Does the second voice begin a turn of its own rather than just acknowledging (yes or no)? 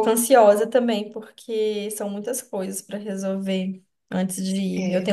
no